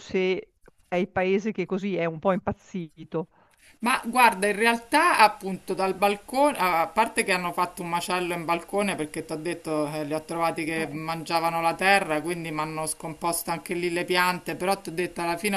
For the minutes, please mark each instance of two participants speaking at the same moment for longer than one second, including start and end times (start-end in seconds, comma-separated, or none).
none